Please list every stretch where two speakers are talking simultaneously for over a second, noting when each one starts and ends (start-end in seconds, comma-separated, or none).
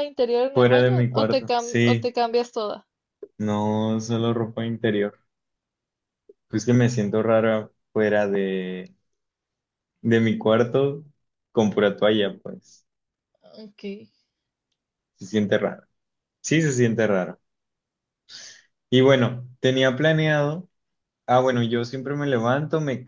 0.5-2.1